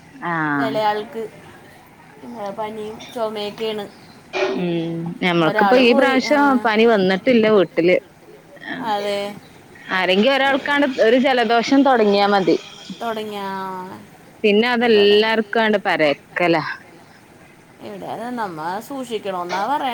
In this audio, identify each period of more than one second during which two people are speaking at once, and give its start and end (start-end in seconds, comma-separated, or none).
none